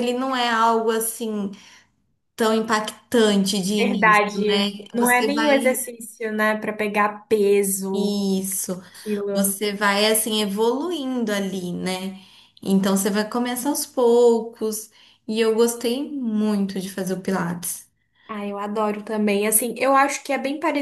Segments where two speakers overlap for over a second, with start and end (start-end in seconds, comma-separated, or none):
3.8-5.8